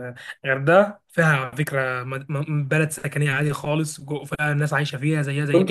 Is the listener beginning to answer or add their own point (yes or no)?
yes